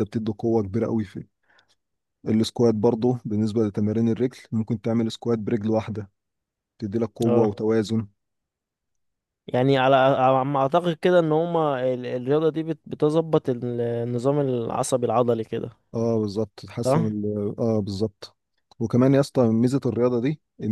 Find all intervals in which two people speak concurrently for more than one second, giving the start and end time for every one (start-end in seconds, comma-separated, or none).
none